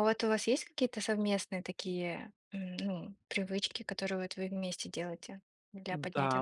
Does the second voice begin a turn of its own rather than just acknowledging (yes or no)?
yes